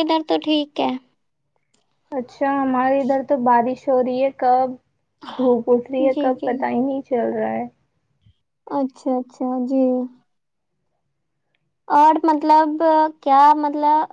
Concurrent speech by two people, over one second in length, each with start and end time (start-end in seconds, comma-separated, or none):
none